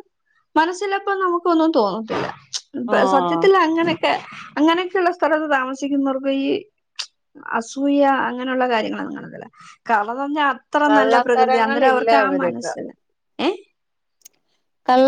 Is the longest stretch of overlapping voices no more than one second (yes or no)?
no